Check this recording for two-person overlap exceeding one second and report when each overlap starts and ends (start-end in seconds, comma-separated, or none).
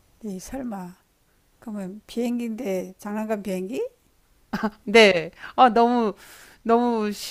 none